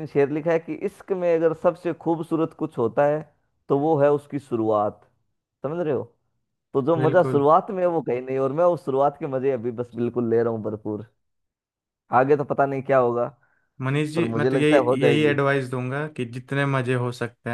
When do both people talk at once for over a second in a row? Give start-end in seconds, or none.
14.1-15.4